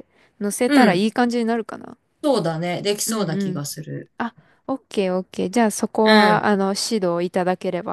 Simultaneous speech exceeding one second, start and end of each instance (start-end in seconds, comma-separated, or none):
none